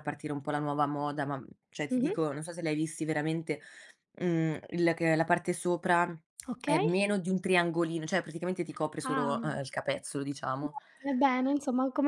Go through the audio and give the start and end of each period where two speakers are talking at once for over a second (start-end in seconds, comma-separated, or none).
none